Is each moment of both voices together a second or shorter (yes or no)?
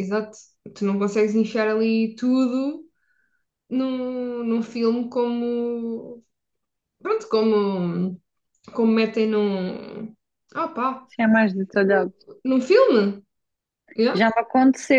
yes